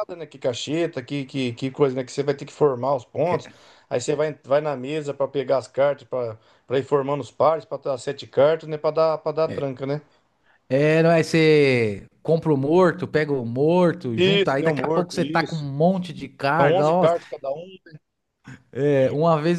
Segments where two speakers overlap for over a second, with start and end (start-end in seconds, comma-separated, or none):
14.2-15.7